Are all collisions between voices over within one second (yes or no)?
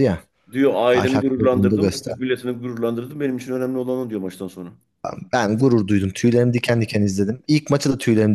no